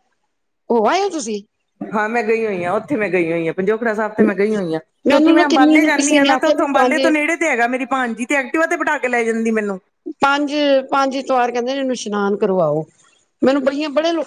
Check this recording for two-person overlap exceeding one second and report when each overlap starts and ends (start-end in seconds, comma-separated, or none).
5.1-7.1